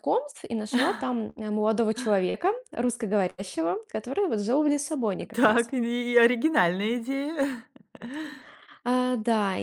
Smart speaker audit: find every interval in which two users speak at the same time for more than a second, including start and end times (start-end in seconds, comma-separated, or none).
none